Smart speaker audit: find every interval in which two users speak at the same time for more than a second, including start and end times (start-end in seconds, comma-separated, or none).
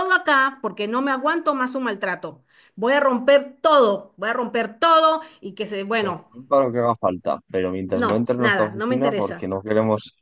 7.9-9.5